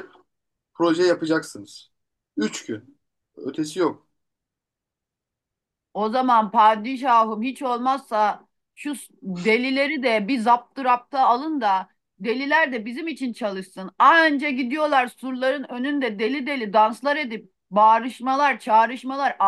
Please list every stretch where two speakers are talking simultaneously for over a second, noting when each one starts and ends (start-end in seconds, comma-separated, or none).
none